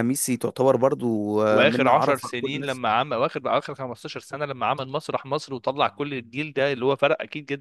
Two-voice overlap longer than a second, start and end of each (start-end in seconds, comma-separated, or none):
1.5-2.8